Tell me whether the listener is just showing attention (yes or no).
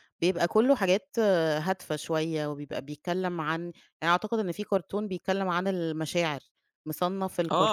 no